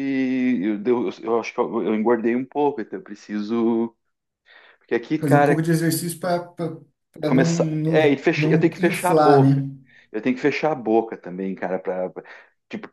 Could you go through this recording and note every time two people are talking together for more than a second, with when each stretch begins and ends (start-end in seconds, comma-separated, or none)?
7.3-9.6